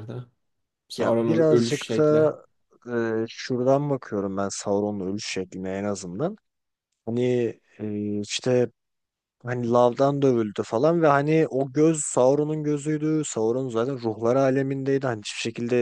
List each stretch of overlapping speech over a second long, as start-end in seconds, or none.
1.0-2.3